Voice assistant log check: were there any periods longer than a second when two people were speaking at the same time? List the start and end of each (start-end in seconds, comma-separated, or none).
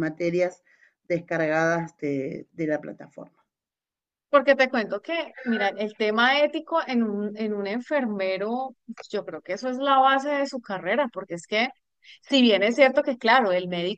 none